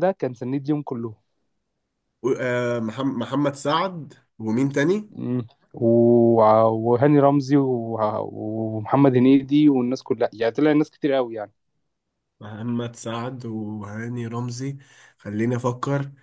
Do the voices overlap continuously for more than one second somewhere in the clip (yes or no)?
no